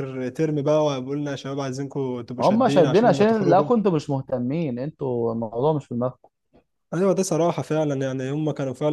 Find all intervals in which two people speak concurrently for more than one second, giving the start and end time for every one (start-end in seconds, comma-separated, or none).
2.4-3.7